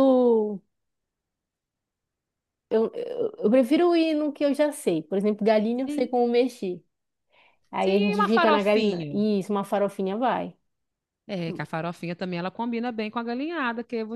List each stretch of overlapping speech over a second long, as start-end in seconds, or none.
7.8-9.2